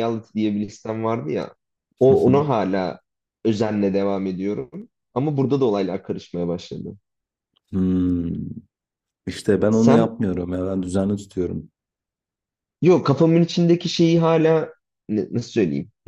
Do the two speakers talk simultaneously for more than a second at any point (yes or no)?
no